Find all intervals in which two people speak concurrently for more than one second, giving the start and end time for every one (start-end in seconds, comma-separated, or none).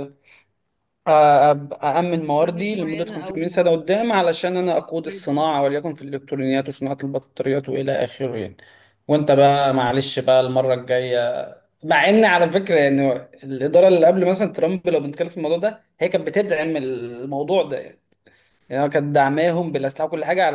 2.4-3.7